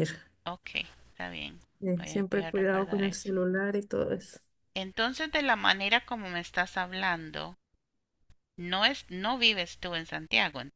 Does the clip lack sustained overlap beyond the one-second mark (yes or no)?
no